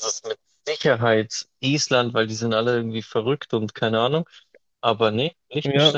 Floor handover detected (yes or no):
yes